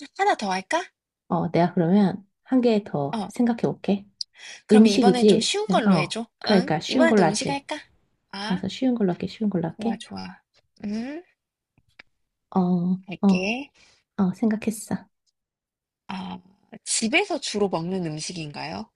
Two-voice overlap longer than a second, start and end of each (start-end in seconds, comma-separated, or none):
4.7-7.6